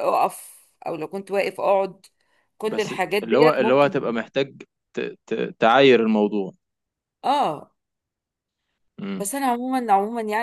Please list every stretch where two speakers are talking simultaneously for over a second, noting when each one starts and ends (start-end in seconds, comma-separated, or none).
2.6-4.2